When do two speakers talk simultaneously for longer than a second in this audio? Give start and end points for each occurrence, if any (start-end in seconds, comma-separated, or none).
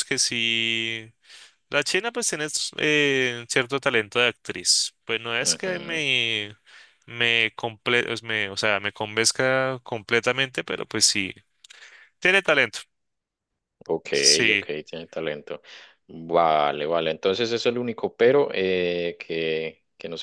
none